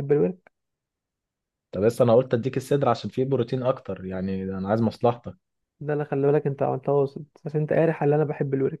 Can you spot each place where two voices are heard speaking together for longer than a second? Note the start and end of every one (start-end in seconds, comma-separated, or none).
none